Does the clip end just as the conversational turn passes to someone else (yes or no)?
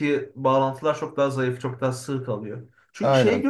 no